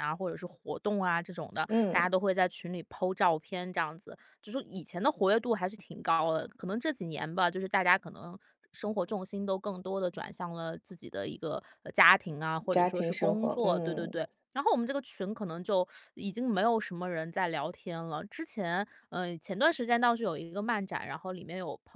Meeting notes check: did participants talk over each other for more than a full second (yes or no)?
yes